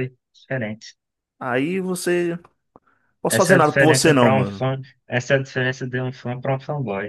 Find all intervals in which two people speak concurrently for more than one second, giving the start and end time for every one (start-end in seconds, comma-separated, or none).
3.3-4.7